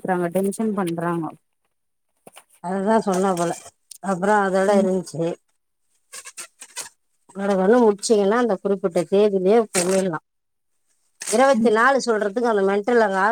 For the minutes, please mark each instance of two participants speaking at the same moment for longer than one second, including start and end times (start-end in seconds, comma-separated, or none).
none